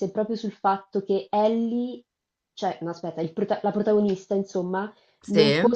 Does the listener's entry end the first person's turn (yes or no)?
no